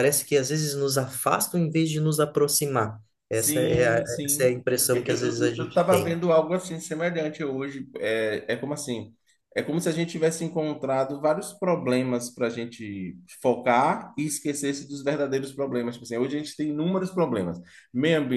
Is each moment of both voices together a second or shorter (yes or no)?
no